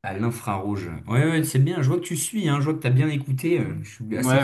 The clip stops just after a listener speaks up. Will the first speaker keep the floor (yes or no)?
no